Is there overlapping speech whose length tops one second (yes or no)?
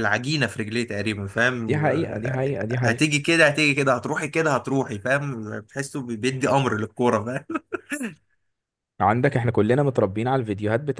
yes